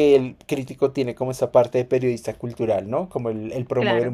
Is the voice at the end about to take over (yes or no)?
no